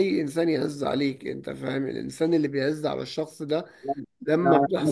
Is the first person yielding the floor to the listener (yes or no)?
no